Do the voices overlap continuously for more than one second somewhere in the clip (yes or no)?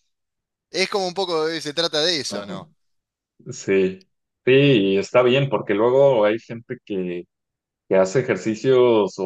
no